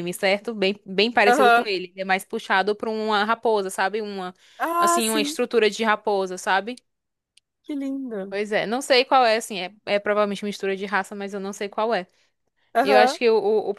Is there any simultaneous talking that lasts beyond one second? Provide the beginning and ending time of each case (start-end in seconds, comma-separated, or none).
none